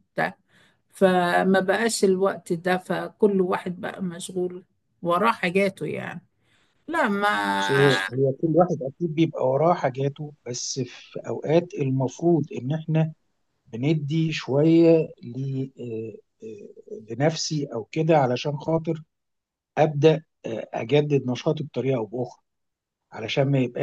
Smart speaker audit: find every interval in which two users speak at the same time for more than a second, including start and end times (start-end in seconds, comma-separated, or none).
none